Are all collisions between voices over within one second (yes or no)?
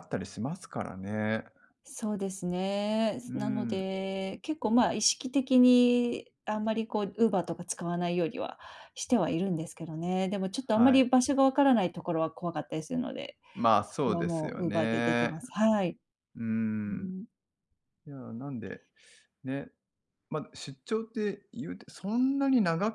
no